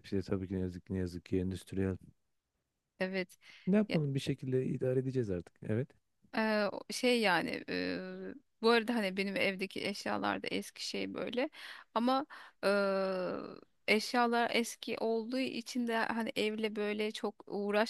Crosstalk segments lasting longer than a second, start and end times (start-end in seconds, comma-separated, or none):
none